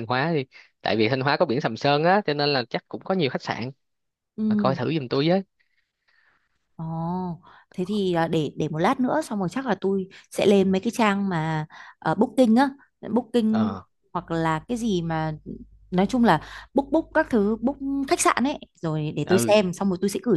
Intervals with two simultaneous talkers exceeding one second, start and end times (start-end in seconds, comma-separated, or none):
none